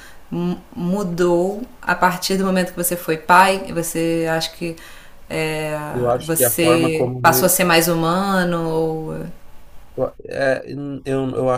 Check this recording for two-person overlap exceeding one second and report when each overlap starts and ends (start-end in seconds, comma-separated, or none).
6.2-7.5